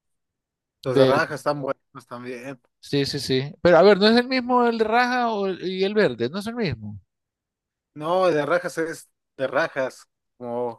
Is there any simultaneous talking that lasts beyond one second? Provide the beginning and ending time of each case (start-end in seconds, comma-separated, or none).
none